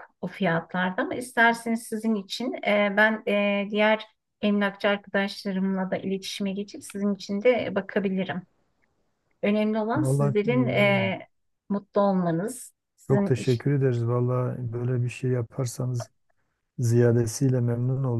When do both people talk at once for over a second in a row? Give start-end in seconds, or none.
9.9-11.2